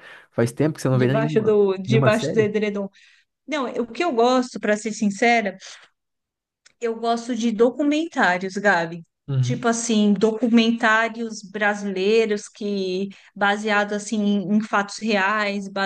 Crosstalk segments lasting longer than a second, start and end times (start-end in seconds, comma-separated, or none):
0.9-2.5